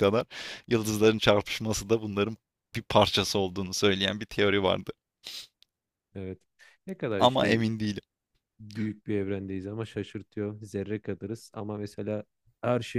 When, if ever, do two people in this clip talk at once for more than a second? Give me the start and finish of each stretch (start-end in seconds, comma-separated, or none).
none